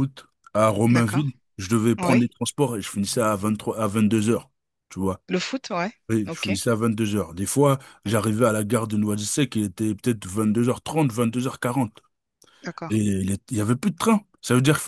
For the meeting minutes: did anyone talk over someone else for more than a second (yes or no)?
no